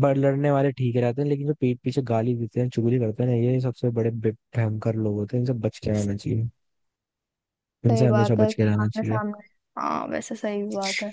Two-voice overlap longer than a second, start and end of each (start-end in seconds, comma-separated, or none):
7.9-9.2